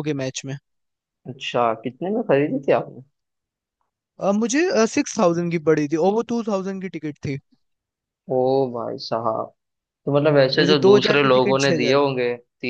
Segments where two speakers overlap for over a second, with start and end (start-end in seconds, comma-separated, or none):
10.6-12.1